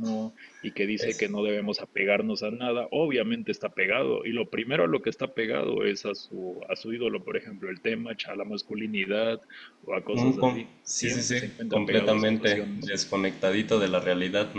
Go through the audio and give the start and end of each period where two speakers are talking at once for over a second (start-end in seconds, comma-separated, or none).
10.1-12.9